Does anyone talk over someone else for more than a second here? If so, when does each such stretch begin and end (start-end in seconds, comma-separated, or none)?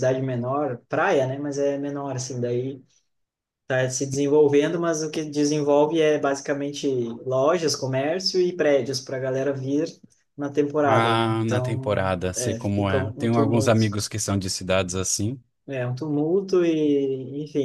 10.9-13.9